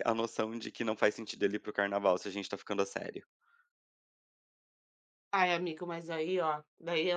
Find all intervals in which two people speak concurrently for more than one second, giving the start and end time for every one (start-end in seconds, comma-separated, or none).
none